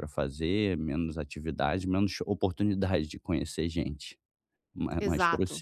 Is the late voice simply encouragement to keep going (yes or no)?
no